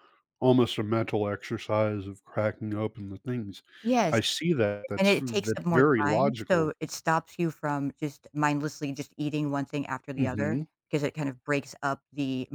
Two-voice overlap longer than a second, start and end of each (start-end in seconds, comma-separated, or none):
5.0-6.7